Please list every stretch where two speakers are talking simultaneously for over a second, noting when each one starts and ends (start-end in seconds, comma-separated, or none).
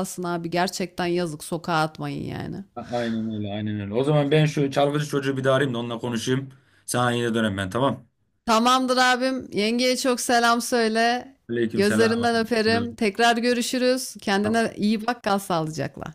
none